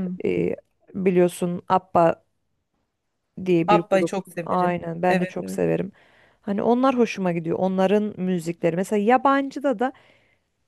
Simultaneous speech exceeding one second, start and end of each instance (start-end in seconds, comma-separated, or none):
3.7-5.6